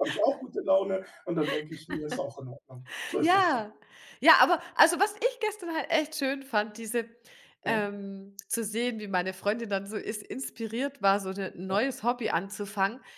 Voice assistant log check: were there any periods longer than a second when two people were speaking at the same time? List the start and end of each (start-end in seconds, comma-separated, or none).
none